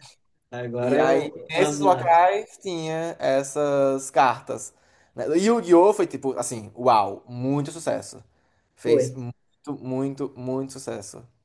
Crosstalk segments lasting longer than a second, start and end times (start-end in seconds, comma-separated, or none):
0.8-2.1